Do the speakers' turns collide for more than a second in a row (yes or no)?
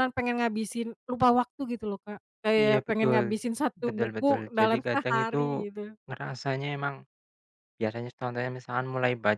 yes